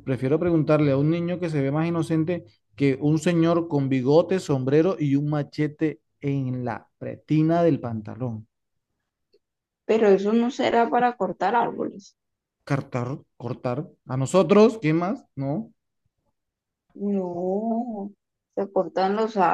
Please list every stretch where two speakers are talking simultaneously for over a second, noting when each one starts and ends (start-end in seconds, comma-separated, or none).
none